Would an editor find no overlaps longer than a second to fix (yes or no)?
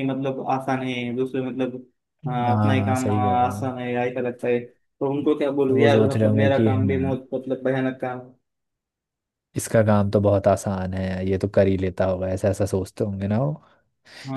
no